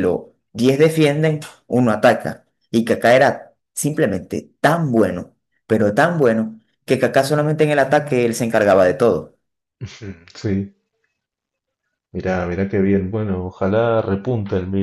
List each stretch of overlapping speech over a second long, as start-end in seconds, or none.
none